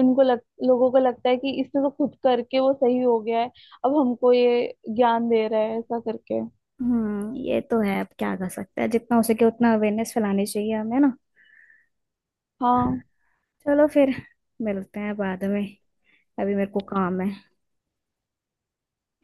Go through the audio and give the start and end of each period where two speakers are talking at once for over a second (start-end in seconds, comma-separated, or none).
none